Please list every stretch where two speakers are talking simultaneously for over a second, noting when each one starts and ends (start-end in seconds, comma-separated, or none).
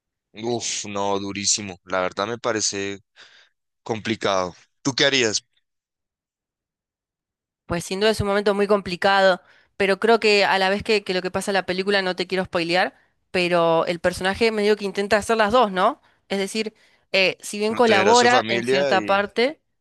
17.6-19.2